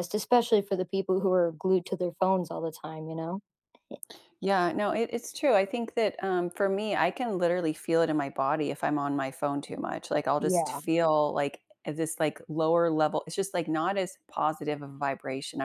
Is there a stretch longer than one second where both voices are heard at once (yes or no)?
no